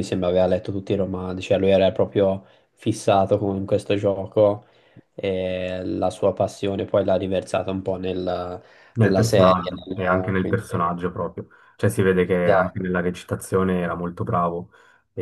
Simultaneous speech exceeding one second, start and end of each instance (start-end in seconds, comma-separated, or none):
9.0-10.6